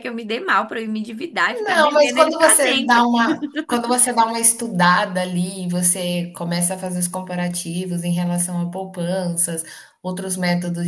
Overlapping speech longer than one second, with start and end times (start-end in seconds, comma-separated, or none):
1.5-3.1